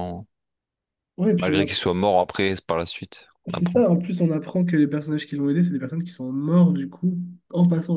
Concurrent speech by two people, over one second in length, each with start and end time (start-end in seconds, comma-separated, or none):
none